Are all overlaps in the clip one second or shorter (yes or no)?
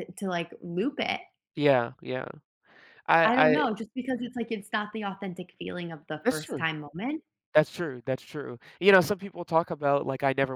yes